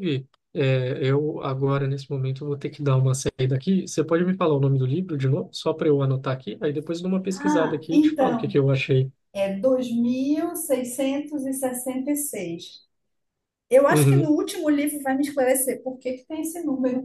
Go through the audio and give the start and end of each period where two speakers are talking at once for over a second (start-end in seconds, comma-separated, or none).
7.3-8.6